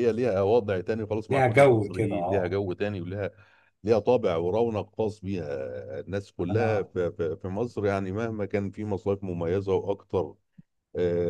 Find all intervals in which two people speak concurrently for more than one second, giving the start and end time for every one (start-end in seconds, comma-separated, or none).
1.3-2.5